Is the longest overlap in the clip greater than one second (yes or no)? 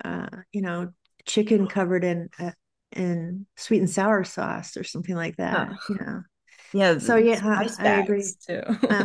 yes